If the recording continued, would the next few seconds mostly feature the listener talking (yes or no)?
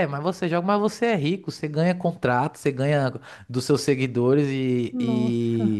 no